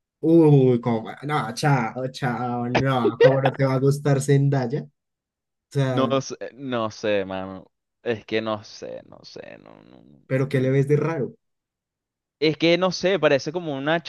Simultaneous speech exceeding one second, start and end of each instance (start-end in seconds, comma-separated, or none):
none